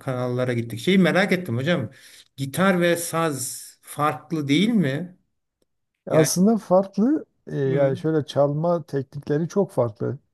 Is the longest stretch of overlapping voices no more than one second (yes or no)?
yes